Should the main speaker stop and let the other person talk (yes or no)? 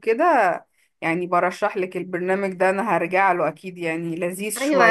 yes